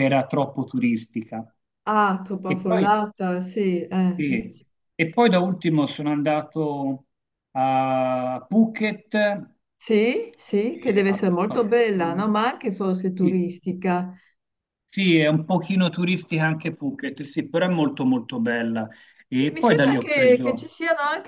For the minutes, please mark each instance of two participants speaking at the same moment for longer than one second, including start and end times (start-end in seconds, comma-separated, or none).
10.9-12.3, 19.3-20.7